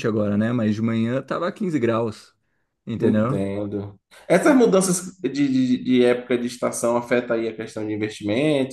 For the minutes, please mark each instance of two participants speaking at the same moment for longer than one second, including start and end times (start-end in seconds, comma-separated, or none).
none